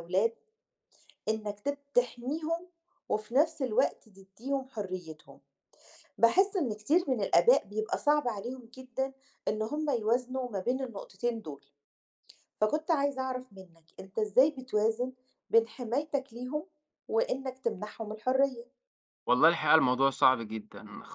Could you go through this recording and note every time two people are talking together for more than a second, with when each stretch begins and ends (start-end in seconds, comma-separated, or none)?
none